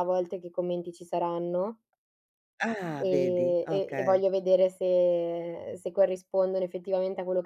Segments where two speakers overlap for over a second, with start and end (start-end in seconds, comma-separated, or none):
3.0-4.2